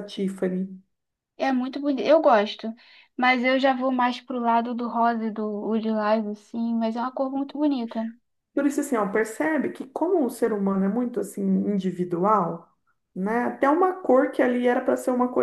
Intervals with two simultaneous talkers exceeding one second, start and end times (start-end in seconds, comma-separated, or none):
none